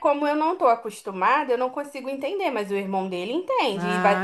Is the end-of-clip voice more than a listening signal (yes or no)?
yes